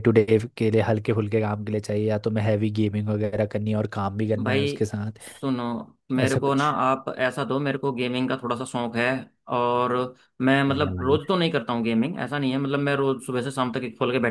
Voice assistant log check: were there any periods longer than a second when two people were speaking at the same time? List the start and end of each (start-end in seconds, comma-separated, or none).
none